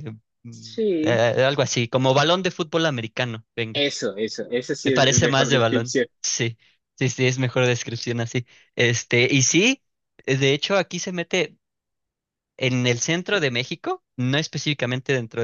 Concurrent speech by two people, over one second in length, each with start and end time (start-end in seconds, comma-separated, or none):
4.8-6.1